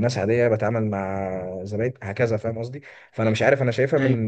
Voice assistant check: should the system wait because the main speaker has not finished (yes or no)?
yes